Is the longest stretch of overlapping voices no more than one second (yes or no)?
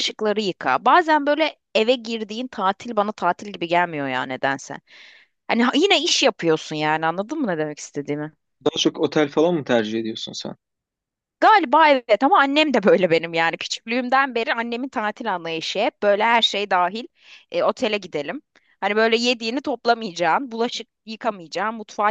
yes